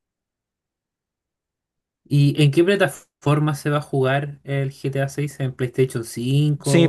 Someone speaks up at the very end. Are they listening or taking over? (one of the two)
taking over